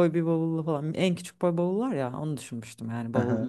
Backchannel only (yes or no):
no